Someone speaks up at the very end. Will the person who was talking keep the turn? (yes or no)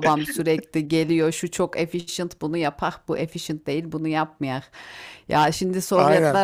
yes